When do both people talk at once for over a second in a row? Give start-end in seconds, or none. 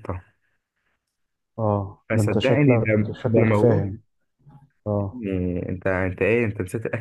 2.1-3.8